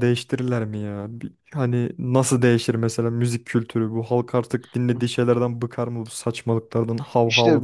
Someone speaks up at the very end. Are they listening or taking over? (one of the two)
taking over